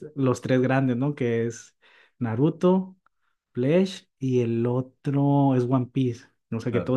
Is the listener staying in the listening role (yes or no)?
yes